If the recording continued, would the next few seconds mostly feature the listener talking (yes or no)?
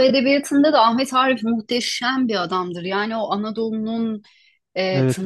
no